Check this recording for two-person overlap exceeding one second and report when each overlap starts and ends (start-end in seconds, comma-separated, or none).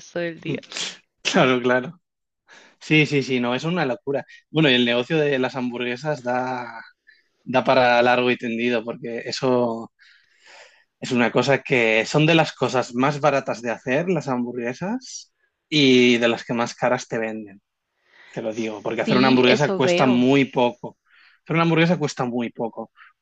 19.0-20.2